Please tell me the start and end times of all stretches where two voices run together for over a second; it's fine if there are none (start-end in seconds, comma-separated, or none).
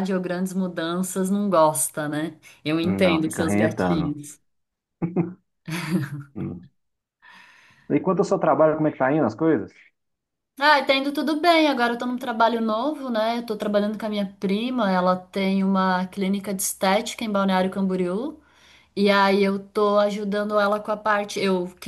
2.8-4.2